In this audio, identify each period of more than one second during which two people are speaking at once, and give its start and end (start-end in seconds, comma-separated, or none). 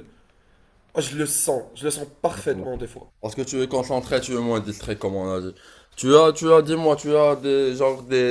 none